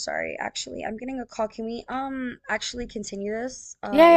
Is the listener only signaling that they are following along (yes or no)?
no